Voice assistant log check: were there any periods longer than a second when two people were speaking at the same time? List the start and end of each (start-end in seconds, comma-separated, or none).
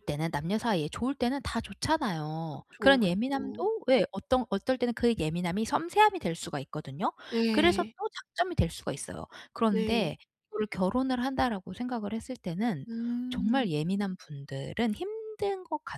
2.5-3.7